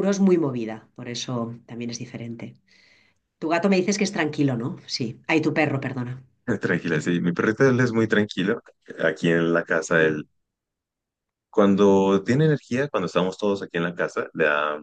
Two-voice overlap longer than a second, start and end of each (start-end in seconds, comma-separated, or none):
none